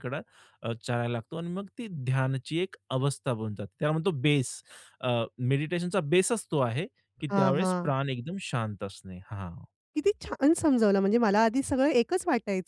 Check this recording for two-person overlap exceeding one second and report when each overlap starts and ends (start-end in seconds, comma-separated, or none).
none